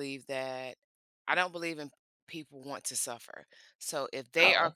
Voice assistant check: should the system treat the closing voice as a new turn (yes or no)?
no